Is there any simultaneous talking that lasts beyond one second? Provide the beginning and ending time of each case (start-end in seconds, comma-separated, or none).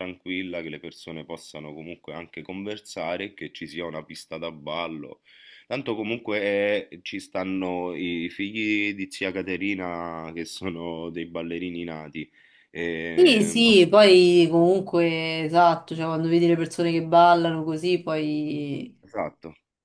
none